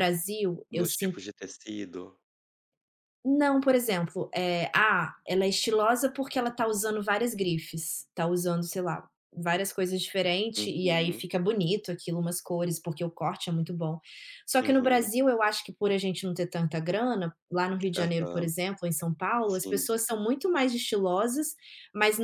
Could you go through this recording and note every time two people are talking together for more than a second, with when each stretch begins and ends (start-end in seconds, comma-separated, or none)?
none